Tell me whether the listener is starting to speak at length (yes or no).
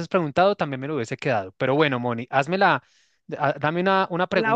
no